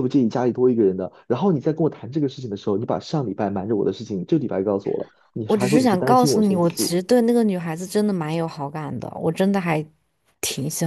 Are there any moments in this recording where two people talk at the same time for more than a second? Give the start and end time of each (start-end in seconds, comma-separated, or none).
5.5-7.0